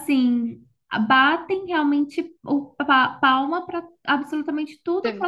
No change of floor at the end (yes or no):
yes